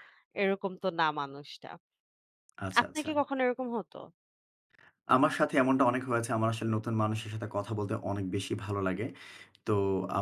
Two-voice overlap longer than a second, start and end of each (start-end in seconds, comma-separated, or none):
none